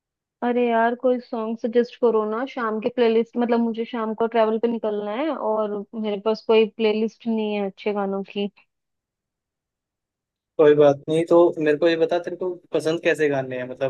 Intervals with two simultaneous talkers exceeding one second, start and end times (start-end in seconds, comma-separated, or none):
none